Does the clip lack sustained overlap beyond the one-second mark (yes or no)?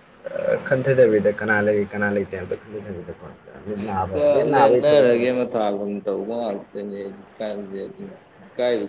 yes